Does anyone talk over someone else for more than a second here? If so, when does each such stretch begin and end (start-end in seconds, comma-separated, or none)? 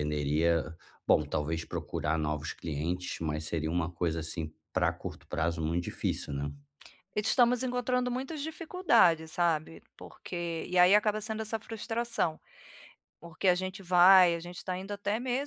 none